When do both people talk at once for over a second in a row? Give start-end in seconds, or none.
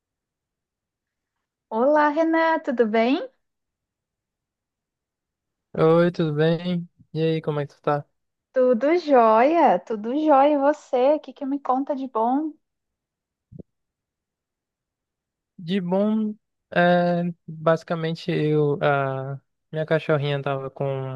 none